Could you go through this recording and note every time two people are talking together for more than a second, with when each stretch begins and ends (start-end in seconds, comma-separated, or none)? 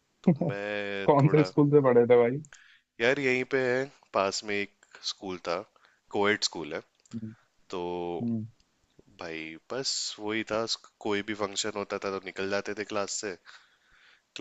none